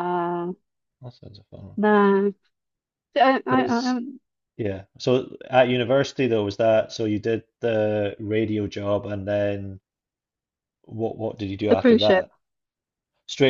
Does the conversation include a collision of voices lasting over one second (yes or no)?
no